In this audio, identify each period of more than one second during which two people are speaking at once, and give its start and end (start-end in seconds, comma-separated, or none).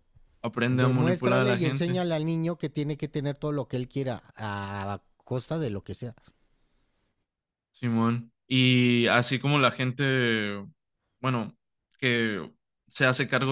0.7-2.0